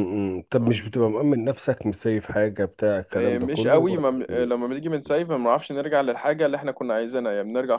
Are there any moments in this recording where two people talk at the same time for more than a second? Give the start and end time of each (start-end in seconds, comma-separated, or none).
3.1-4.7